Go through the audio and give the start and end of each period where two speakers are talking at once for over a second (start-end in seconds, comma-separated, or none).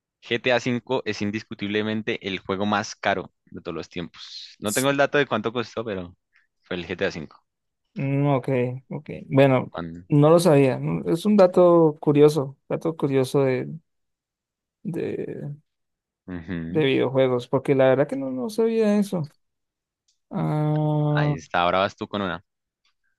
none